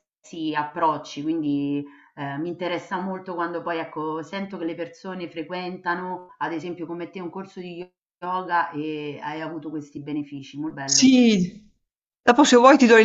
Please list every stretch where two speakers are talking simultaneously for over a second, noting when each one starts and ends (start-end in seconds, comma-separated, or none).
none